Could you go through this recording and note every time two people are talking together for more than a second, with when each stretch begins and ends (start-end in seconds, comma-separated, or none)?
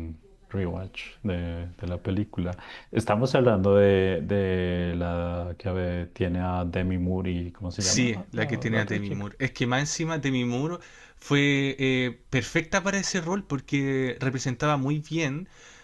7.8-9.3